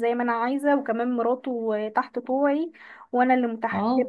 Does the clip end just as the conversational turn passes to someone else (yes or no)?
no